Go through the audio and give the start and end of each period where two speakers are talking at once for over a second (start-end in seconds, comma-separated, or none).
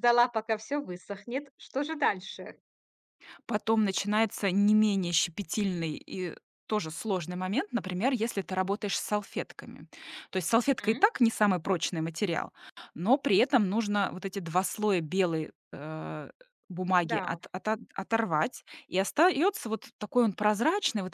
none